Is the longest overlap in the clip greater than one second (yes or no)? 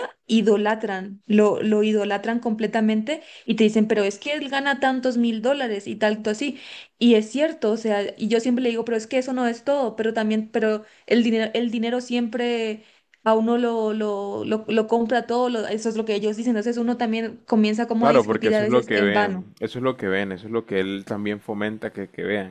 yes